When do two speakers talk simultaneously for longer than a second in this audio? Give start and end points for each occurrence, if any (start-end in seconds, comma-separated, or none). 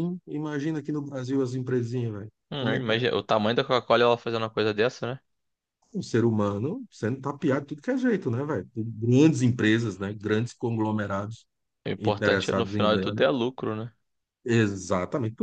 12.0-13.2